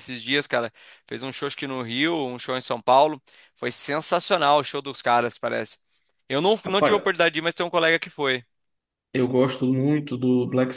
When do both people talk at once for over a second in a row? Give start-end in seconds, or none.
none